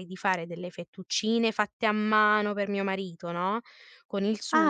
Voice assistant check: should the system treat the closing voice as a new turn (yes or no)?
yes